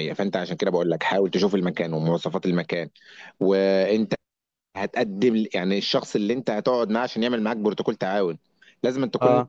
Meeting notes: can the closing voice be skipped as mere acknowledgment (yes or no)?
yes